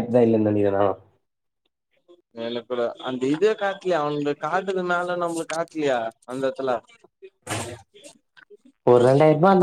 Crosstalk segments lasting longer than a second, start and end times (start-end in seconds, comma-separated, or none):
none